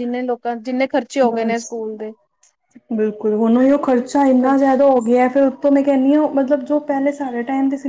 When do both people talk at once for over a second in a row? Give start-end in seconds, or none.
none